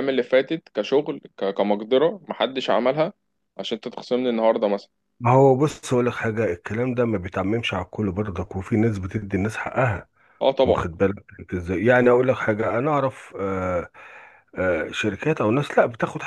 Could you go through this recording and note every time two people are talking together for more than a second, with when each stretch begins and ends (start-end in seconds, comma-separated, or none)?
none